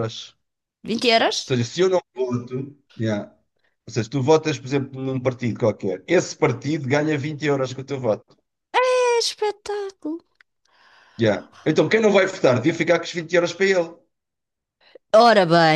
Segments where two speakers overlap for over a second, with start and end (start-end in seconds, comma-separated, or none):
none